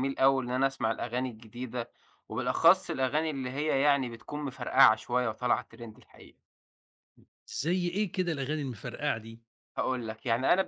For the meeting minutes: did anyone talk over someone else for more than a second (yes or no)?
no